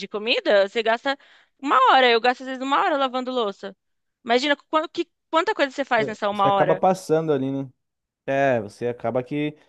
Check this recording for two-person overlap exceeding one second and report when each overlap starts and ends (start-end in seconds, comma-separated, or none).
none